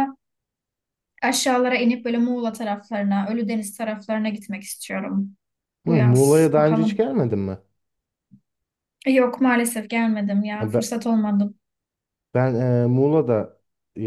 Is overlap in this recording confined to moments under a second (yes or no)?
no